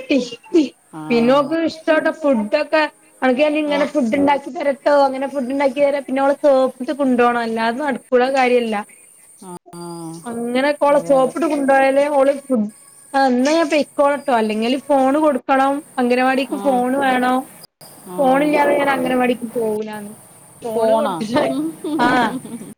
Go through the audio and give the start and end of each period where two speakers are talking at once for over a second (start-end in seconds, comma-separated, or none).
none